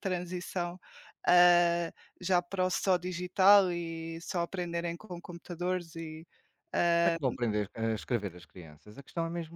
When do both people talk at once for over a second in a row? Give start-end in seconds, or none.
none